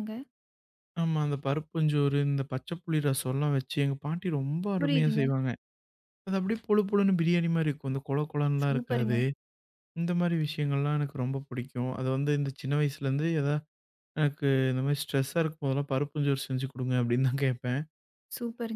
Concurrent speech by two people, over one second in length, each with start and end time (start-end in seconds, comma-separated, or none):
none